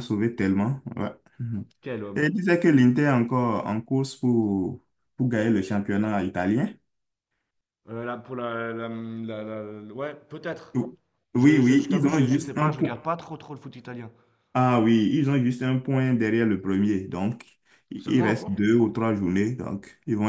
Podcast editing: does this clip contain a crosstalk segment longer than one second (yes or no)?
yes